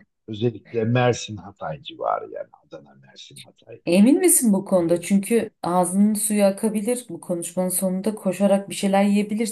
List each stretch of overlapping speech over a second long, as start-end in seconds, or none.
none